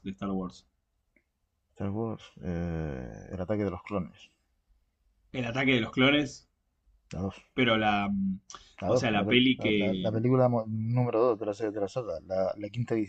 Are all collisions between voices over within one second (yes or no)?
no